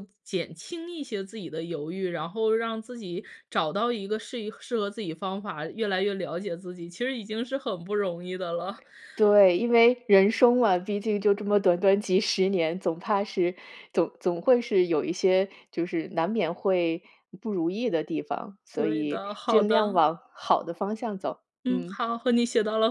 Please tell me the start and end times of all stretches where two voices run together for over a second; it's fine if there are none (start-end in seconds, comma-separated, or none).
18.8-20.0